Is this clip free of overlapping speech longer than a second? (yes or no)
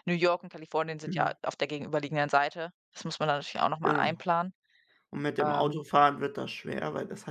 yes